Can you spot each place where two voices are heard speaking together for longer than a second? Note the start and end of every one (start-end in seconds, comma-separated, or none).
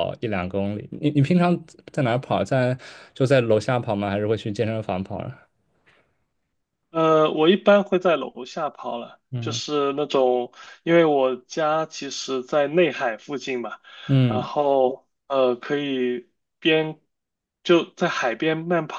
none